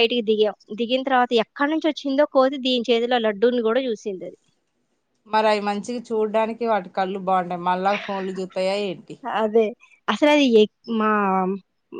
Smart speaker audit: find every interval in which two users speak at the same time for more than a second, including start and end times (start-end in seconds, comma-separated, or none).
none